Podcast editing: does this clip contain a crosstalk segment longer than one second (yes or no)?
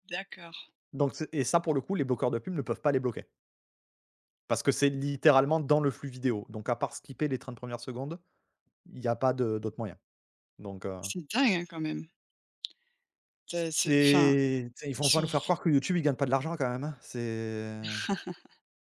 no